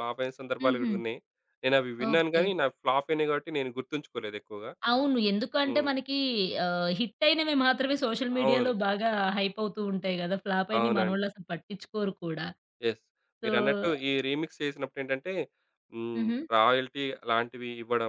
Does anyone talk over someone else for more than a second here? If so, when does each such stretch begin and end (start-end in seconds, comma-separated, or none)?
none